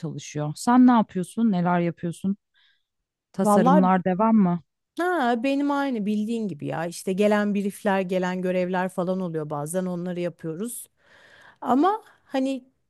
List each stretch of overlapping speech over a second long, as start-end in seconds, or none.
none